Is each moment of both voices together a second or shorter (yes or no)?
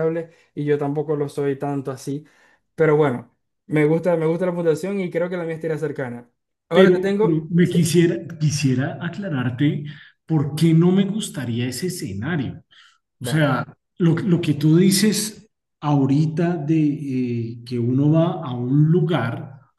no